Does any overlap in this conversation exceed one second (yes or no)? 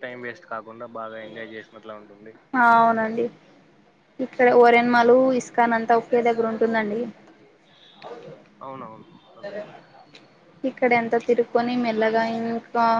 no